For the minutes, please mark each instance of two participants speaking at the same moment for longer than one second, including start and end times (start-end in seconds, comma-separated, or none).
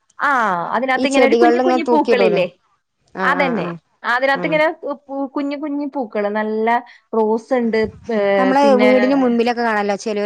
1.0-2.4